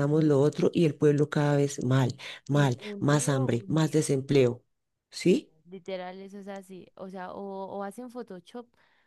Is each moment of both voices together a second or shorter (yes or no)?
no